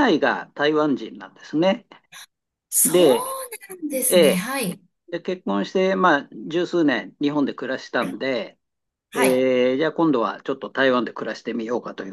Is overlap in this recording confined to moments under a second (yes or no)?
yes